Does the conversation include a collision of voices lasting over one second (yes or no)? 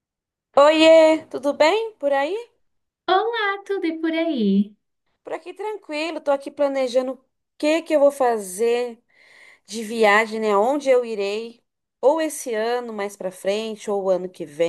no